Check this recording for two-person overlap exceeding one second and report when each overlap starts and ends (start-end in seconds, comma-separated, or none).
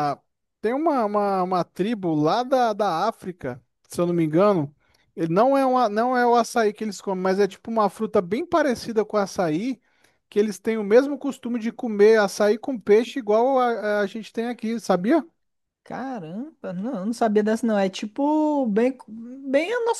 none